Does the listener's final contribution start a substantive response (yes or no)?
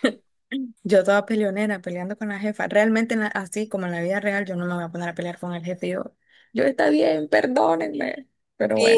yes